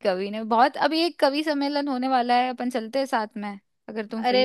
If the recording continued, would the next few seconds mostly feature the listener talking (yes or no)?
yes